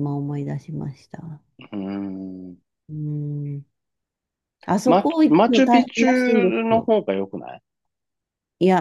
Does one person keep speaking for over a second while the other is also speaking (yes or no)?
yes